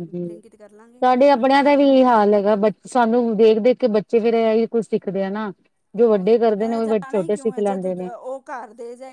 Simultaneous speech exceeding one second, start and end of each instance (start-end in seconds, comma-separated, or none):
6.0-8.1